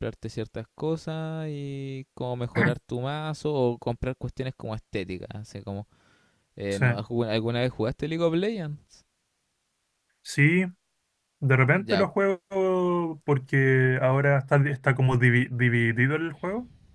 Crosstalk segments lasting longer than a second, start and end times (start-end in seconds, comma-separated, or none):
none